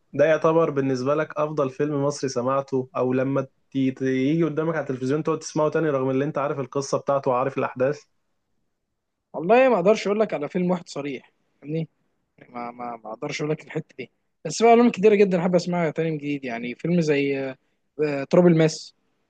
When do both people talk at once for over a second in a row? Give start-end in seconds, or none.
none